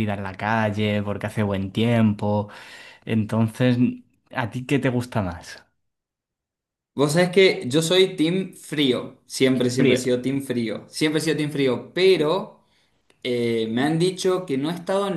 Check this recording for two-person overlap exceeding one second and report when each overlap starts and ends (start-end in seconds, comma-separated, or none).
none